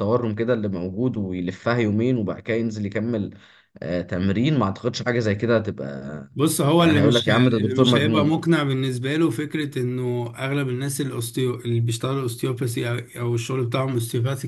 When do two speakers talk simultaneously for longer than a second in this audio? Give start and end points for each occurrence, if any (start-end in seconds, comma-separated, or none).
6.8-8.4